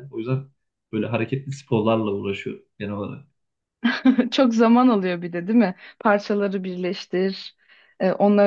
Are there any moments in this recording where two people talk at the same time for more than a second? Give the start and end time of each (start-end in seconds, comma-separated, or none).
none